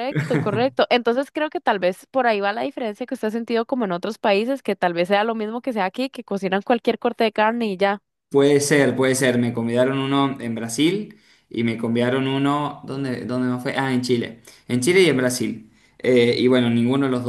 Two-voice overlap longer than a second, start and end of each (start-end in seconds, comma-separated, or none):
none